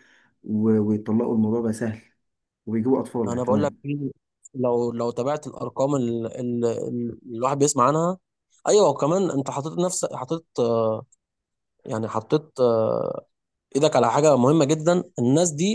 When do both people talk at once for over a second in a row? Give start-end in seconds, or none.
none